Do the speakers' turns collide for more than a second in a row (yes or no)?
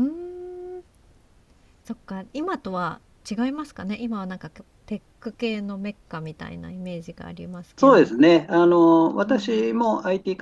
no